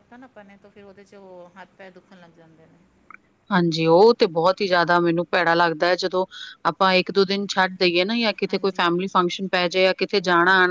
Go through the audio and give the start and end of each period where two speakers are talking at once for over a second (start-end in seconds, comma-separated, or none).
none